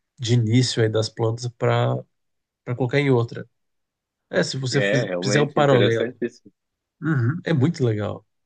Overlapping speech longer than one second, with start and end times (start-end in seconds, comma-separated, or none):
4.7-6.2